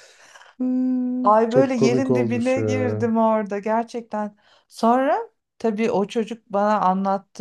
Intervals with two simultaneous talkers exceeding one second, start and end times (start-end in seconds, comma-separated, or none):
1.5-3.1